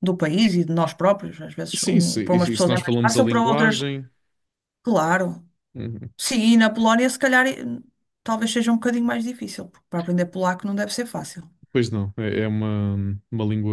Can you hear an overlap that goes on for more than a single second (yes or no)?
yes